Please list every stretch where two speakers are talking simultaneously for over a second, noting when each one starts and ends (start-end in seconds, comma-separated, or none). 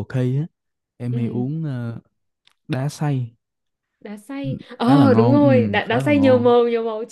4.8-6.5